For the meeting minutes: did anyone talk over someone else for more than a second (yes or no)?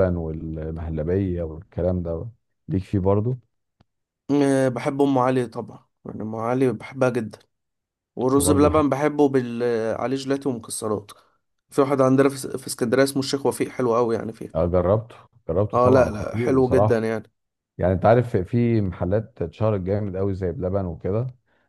yes